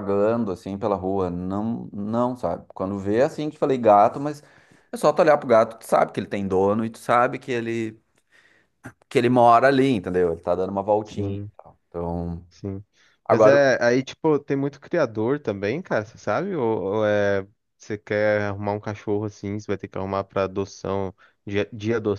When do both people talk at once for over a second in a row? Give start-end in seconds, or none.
none